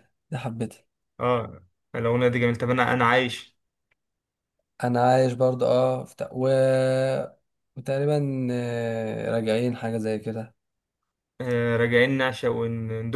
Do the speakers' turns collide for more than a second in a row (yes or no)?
no